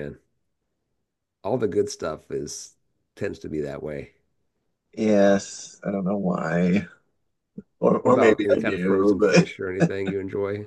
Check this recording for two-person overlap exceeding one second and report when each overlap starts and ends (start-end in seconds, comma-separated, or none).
8.0-9.5